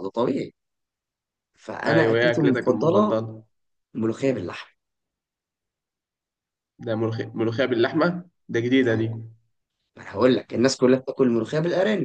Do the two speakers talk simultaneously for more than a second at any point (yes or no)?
yes